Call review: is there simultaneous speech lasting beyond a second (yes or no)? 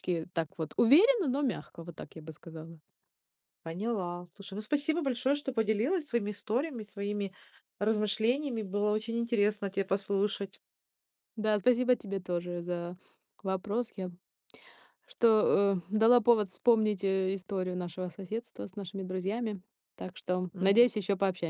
no